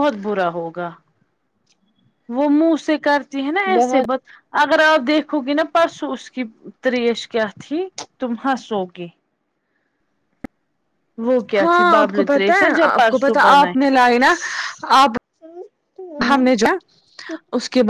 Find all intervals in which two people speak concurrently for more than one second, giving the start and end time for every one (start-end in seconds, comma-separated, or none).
11.6-13.7